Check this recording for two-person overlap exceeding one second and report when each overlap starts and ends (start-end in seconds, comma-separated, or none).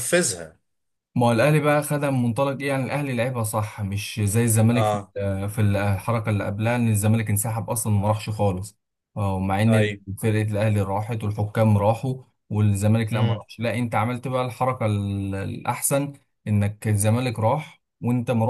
none